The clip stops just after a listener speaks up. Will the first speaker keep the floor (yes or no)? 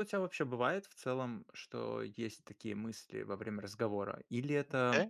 yes